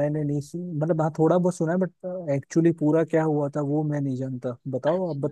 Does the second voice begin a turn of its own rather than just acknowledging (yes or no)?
yes